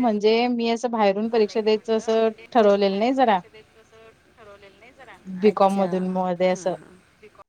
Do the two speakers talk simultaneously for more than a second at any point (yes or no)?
yes